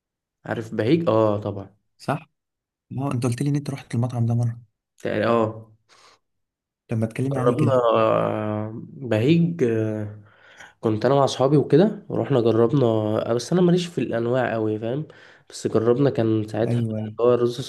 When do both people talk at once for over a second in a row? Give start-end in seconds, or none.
none